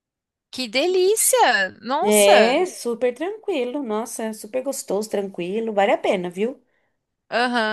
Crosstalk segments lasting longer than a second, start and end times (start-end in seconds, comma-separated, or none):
none